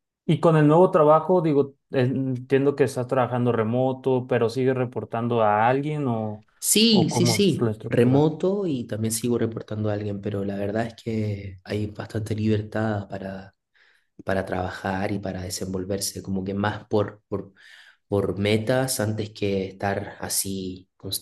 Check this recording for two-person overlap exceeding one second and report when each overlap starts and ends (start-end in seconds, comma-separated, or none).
6.9-8.3